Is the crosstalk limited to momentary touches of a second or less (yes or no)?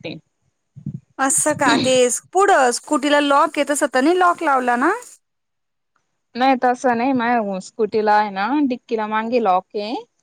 yes